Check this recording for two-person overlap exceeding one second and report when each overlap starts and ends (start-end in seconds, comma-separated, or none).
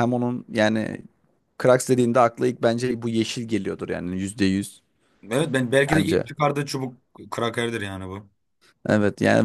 none